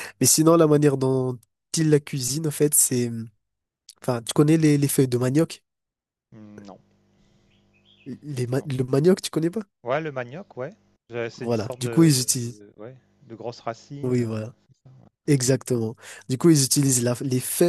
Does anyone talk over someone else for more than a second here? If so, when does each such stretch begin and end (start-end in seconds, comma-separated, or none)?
11.4-12.6